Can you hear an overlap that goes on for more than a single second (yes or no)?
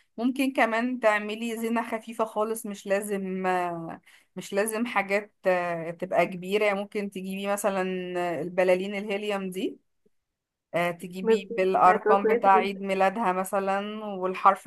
yes